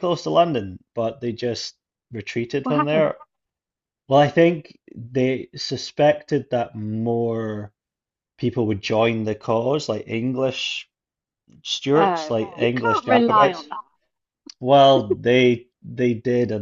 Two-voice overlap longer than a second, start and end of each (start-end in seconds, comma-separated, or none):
11.9-13.7